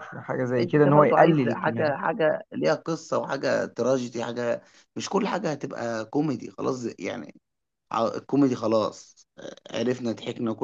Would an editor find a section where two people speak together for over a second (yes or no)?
yes